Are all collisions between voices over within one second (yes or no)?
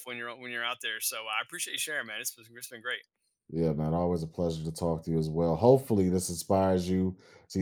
yes